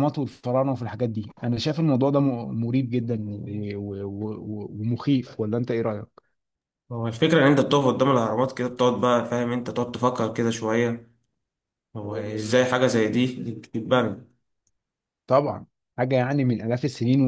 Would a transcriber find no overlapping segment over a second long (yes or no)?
yes